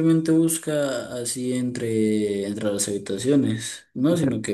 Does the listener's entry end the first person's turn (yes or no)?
no